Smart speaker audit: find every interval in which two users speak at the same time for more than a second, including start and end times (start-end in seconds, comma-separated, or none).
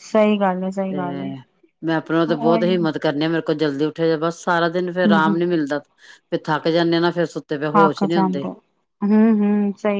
none